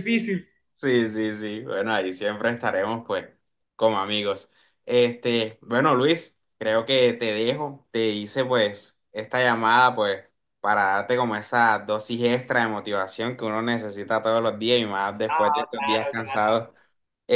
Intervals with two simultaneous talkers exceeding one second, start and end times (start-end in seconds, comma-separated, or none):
15.3-16.5